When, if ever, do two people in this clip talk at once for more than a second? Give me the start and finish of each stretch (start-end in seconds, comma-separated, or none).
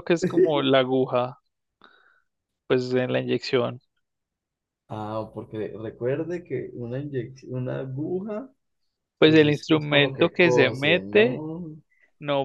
9.2-11.4